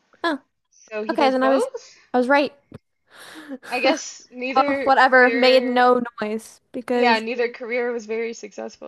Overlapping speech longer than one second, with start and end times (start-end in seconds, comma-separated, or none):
4.5-5.8